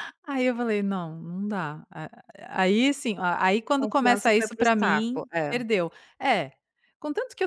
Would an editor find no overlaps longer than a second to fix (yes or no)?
no